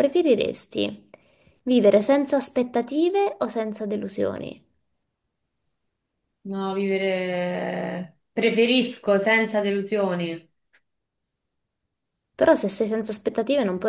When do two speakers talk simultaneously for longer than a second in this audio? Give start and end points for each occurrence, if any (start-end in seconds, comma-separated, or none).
none